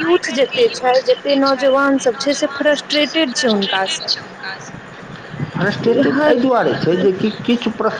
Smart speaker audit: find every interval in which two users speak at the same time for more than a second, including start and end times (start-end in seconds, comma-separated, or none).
none